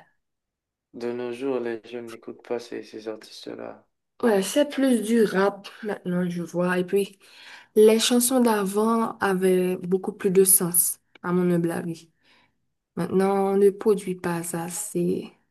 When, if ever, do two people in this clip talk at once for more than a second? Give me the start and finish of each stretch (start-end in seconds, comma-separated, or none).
none